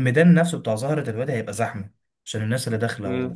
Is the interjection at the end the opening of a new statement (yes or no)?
no